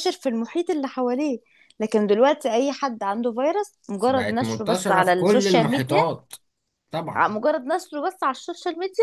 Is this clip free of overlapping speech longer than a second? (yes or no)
no